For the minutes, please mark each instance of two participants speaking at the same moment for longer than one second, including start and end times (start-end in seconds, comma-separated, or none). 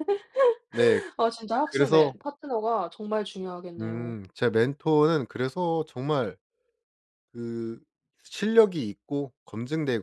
none